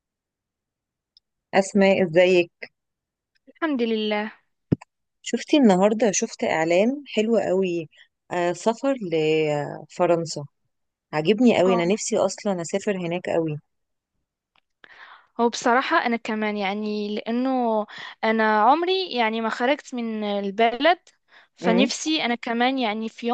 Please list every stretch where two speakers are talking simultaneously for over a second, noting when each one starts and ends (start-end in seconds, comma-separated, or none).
none